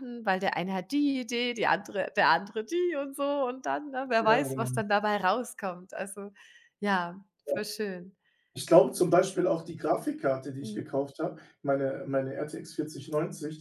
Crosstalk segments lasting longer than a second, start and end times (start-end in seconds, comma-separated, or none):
none